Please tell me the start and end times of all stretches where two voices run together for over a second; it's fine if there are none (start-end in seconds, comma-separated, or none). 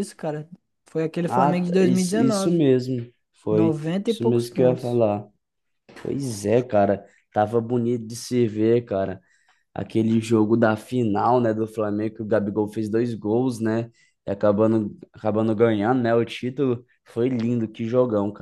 1.2-2.6, 3.5-5.0